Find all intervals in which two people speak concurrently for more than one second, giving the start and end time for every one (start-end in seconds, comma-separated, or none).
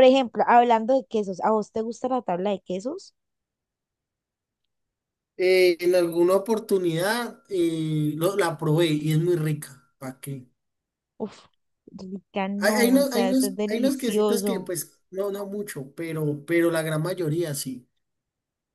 12.6-14.7